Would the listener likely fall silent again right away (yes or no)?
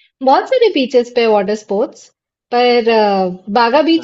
yes